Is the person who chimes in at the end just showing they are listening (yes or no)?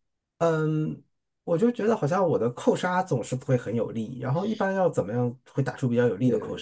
no